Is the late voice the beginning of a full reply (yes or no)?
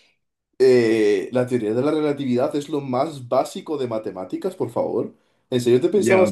yes